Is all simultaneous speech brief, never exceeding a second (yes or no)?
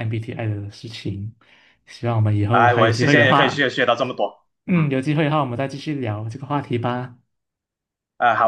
no